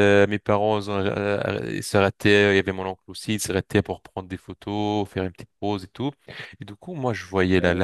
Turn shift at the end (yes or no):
no